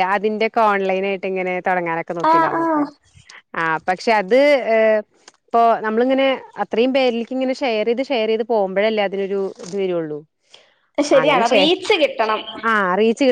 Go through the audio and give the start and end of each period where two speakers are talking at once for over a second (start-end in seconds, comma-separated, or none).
none